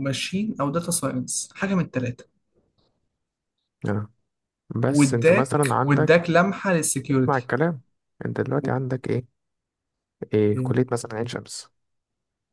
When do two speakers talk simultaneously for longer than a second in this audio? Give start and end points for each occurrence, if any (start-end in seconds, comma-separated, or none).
4.9-6.3